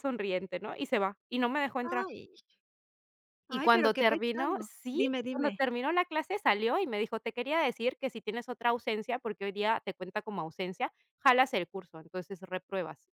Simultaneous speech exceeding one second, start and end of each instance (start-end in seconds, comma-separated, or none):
3.5-5.6